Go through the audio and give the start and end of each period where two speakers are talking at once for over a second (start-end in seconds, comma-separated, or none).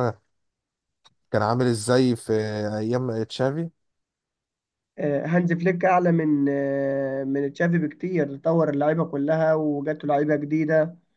none